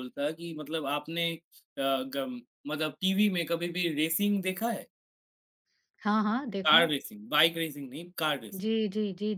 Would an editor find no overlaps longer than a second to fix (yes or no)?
yes